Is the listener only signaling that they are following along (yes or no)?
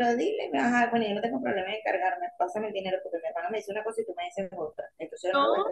yes